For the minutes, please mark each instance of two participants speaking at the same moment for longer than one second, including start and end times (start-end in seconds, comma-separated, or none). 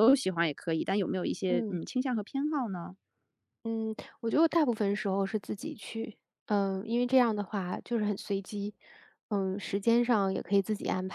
none